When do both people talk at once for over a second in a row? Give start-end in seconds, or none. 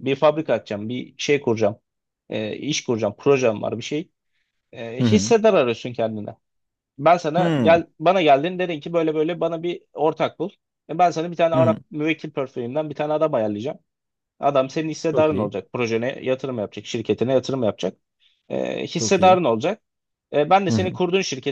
none